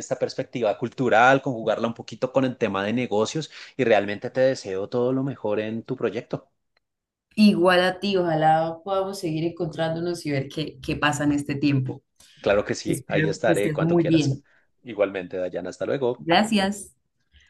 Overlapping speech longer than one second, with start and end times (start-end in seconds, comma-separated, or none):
12.9-14.4